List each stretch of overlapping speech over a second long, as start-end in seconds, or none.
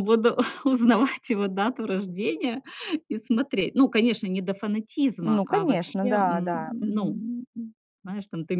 5.2-7.1